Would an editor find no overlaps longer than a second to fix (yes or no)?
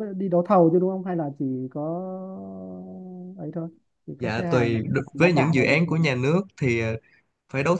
no